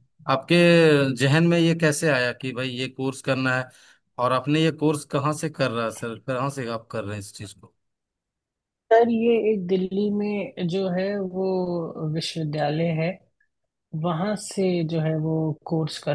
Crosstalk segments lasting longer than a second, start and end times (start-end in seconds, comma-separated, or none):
none